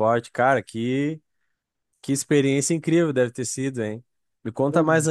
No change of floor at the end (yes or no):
yes